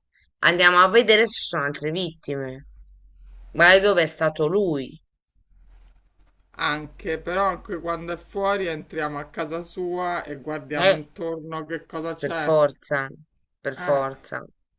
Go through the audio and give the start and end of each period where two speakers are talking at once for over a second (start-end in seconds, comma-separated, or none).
none